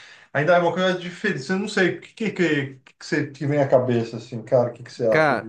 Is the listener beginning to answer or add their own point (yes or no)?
yes